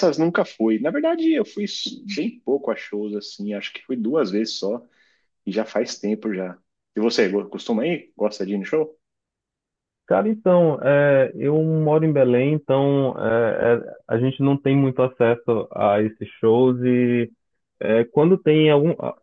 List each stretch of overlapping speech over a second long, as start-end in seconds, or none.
none